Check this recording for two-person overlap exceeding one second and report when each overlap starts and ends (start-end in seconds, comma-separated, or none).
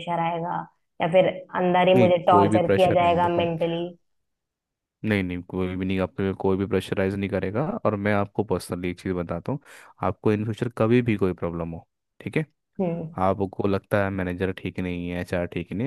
1.9-3.4